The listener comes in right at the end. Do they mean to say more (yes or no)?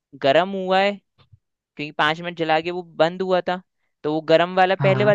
no